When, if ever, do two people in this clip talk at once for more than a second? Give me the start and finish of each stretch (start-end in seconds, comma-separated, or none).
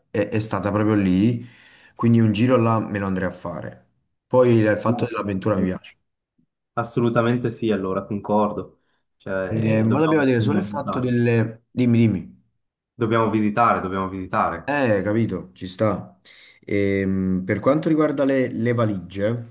9.5-11.1